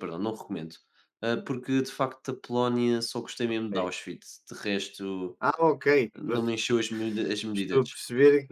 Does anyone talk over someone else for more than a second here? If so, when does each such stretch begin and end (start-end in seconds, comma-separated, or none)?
none